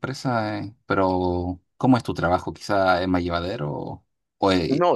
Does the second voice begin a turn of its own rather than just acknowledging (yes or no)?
yes